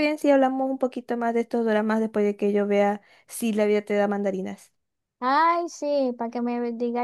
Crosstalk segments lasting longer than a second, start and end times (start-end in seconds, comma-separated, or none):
none